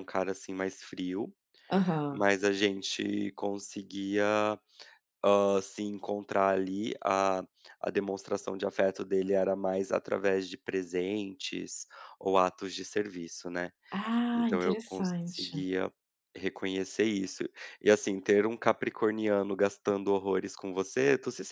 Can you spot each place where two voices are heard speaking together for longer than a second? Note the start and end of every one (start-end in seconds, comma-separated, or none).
14.3-15.6